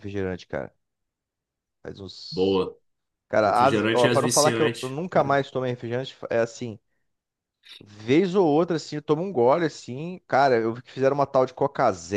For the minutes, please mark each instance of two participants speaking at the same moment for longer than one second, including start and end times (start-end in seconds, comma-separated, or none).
3.4-5.0